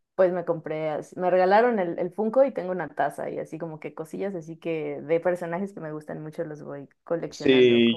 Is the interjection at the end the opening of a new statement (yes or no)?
yes